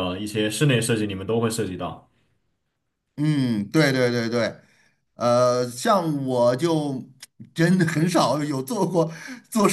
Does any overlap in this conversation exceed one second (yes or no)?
no